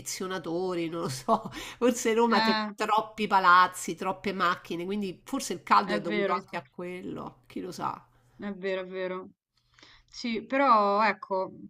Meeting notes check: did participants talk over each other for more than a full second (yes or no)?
no